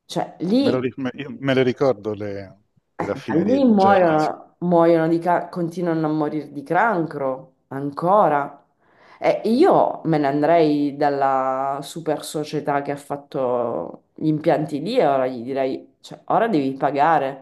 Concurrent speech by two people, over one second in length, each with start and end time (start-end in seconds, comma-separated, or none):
3.0-4.3